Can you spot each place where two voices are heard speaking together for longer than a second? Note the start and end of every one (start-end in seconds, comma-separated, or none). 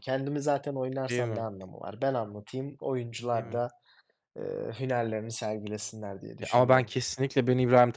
none